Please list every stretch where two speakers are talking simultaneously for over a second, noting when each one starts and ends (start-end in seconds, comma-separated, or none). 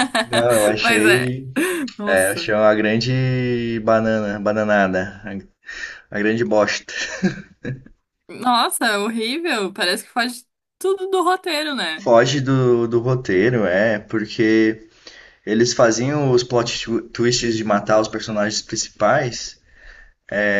none